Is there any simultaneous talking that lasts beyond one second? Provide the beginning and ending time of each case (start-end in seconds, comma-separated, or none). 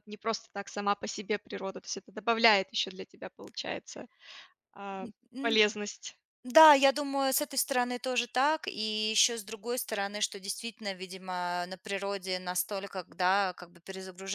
none